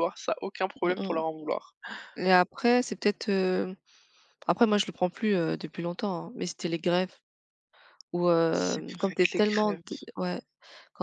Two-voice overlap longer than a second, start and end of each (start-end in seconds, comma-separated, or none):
8.5-9.8